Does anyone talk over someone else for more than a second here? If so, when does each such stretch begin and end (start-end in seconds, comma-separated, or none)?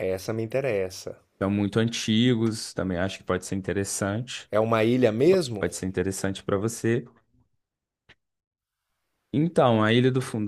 none